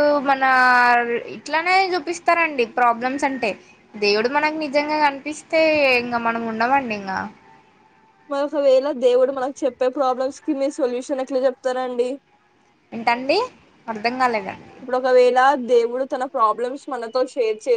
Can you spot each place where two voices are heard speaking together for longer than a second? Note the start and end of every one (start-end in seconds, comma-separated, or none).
none